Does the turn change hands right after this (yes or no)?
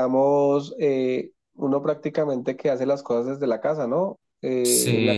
no